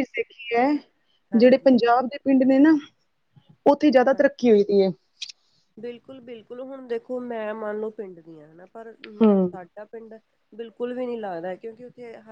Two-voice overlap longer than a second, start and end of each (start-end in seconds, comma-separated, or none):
none